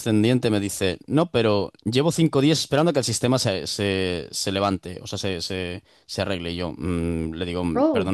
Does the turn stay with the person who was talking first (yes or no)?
yes